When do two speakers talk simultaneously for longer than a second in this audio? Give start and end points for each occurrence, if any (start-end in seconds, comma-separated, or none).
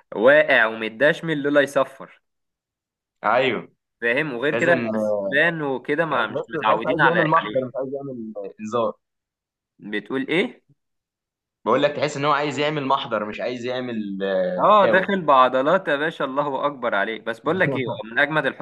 6.1-7.7